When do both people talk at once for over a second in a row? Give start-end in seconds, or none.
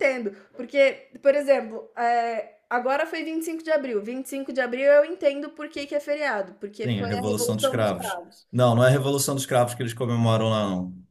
6.8-8.5